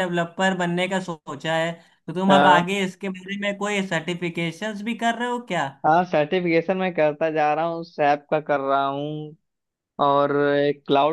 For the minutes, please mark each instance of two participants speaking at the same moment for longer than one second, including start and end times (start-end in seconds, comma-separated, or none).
none